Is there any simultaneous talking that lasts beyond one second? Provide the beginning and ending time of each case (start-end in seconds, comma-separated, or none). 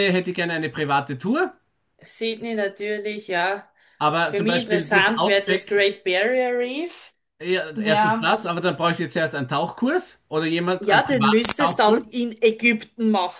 4.1-5.7, 10.8-12.2